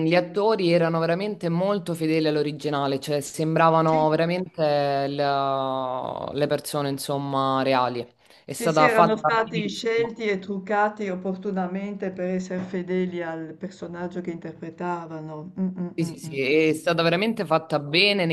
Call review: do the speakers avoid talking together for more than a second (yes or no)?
no